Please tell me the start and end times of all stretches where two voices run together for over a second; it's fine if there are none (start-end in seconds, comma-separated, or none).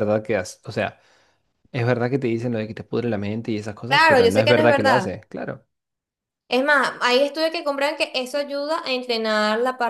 3.9-5.1